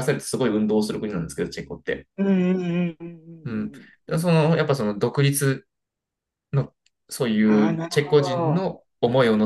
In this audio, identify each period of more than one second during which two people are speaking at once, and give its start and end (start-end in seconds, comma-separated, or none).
7.4-8.7